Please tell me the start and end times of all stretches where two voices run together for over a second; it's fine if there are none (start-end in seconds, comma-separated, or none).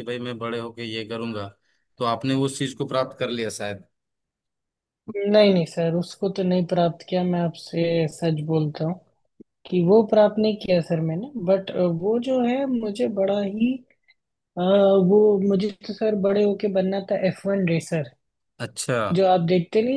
none